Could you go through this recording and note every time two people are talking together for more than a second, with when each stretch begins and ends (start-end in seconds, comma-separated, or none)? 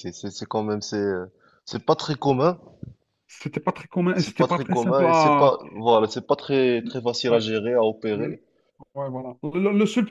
4.1-5.5